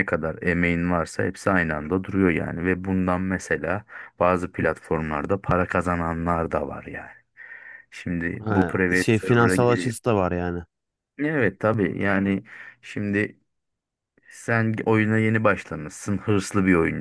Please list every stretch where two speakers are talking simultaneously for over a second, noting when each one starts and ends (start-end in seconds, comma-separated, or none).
8.4-9.9